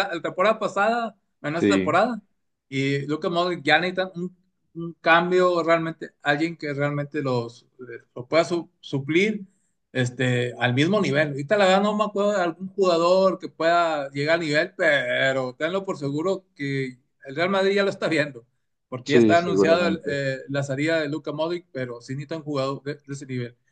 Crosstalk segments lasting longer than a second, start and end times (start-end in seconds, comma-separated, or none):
19.0-20.2